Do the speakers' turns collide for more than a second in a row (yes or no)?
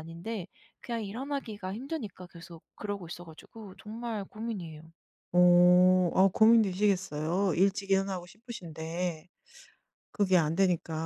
no